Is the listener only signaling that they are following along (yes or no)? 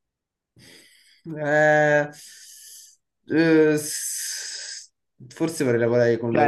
no